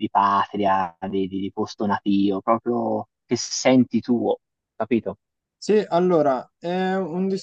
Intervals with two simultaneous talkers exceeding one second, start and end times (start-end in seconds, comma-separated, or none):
none